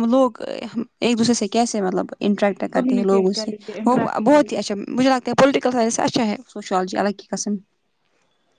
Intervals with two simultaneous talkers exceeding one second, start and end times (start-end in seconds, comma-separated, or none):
2.7-4.6